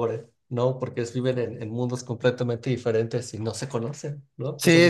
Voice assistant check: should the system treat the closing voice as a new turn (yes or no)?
yes